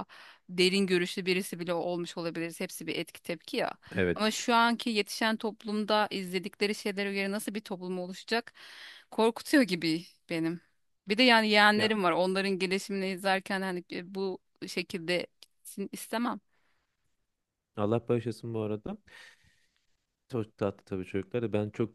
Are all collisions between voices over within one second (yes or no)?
yes